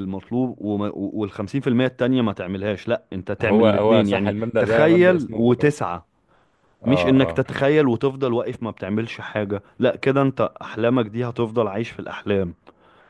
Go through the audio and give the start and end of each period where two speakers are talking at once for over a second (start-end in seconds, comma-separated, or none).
3.4-5.4